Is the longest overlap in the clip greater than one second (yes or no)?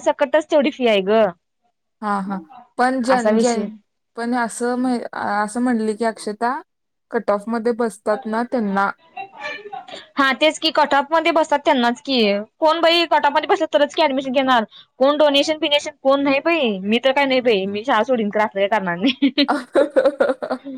no